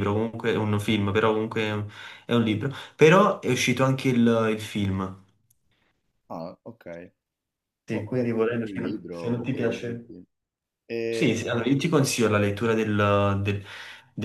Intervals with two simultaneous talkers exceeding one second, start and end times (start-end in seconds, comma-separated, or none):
7.9-10.1